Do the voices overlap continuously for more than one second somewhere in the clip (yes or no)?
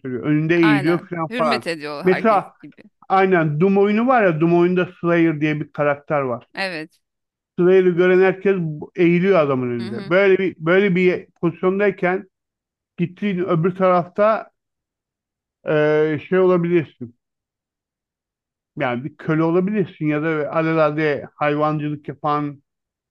yes